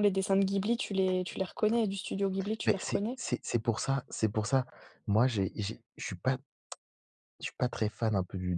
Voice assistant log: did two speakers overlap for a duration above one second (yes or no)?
no